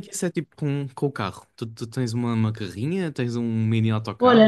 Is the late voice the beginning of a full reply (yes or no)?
yes